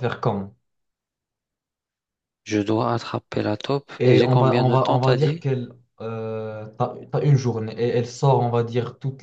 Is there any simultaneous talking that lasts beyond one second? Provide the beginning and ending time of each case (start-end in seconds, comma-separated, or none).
4.0-5.5